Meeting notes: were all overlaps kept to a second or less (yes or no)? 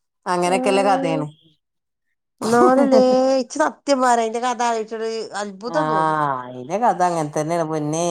yes